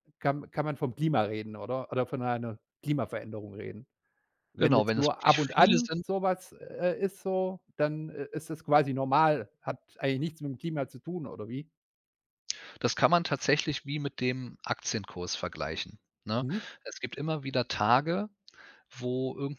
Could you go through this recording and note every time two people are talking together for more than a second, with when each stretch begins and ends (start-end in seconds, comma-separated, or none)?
4.6-6.0